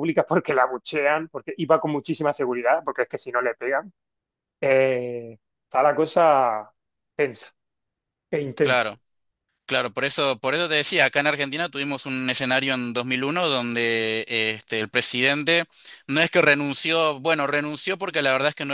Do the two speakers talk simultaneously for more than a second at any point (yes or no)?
no